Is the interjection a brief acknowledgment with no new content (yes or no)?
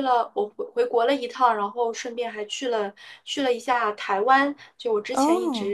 yes